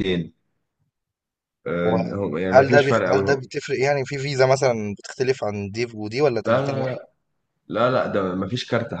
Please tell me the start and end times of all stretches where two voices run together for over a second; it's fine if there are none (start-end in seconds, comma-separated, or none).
1.8-3.4